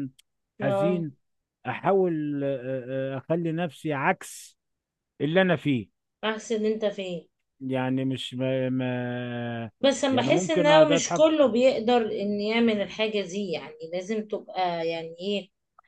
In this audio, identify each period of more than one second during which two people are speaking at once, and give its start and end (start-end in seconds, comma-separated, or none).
10.1-11.3